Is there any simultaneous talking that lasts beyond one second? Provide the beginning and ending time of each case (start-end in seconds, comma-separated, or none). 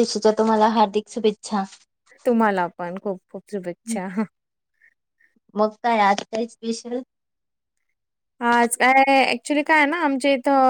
none